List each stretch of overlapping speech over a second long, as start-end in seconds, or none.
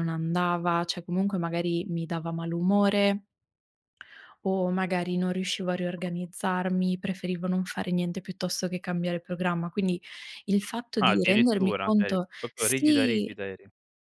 11.0-13.4